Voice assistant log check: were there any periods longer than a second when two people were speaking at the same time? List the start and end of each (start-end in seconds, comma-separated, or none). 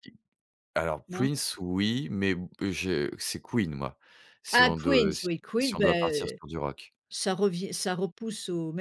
4.5-6.4